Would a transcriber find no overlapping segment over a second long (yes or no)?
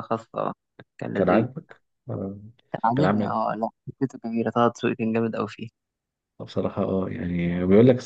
yes